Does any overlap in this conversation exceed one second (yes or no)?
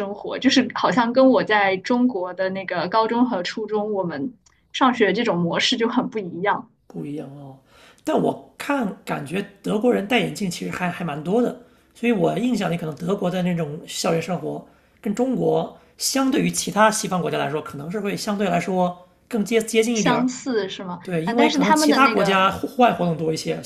yes